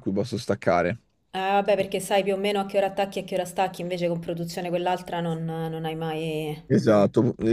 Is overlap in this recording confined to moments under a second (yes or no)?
yes